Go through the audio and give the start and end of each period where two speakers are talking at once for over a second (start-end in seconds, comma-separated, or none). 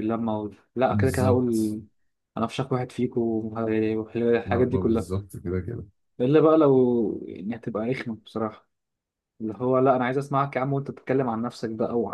none